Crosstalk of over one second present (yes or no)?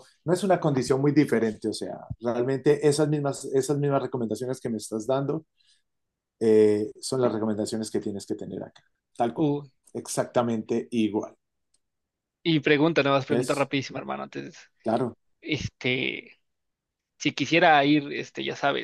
no